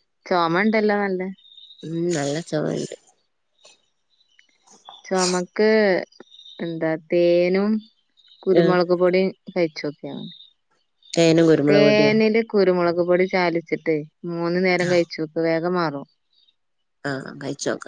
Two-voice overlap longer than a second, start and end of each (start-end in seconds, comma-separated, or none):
none